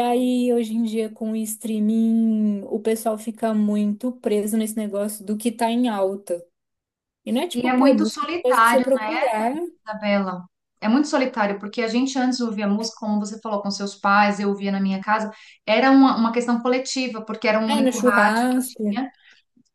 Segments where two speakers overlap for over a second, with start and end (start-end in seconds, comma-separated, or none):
7.5-8.8, 17.7-19.1